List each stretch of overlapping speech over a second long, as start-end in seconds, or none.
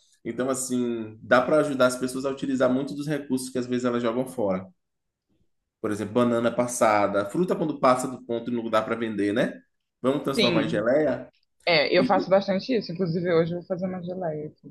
none